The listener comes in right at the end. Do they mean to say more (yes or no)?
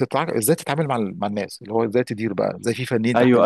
yes